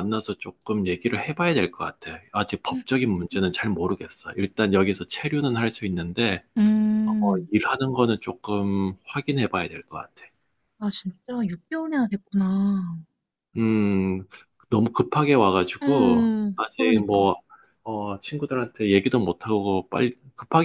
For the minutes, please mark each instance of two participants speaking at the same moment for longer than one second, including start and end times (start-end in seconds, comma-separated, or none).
15.8-17.4